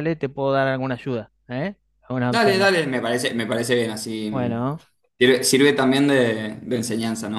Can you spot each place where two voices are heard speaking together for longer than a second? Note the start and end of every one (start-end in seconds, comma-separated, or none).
none